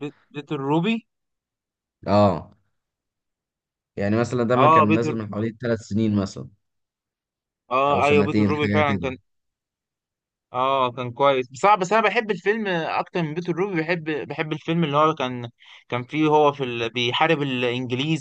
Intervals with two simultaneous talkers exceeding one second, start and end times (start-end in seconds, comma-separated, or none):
7.9-9.1